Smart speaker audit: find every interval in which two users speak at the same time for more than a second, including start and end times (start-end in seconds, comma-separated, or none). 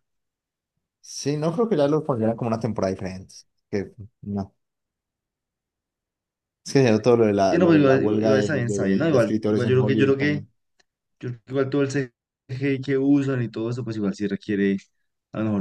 7.5-10.4